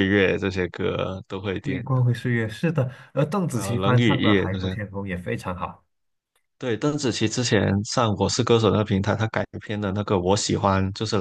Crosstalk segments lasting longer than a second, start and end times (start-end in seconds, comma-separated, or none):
3.5-4.8